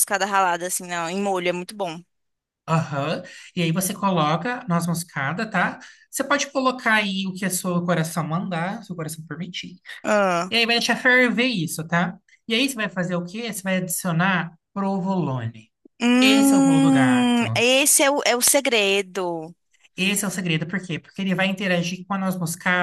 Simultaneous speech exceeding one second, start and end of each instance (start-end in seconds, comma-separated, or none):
16.2-17.6